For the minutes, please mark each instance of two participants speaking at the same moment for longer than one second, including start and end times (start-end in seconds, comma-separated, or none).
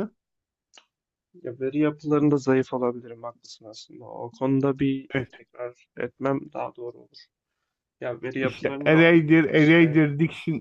8.4-10.0